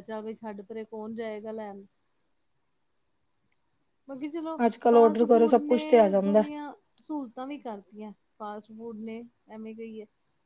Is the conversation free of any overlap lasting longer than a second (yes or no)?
no